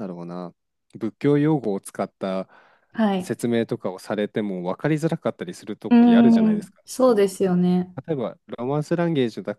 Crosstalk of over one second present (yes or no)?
yes